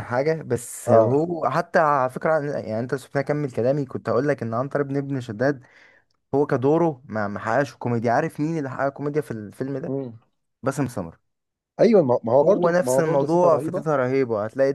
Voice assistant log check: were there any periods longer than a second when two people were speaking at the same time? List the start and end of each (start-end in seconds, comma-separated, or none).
12.4-13.8